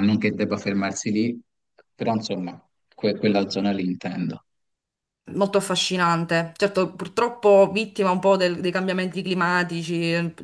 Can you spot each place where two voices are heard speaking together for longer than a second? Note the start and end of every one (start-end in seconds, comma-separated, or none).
none